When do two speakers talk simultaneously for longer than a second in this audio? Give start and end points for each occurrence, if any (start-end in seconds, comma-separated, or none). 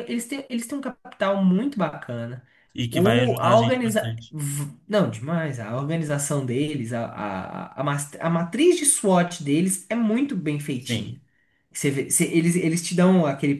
2.9-4.3